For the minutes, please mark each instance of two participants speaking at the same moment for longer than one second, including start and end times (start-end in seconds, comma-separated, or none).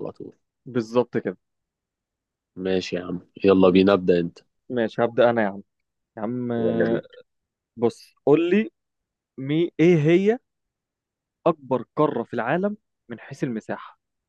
none